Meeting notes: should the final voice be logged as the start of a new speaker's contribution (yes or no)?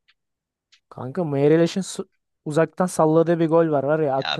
yes